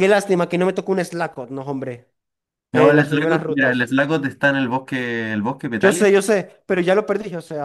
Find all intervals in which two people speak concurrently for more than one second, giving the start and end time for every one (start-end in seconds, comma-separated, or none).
2.7-3.9